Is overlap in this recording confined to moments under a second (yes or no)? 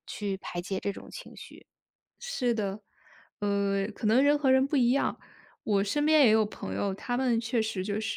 yes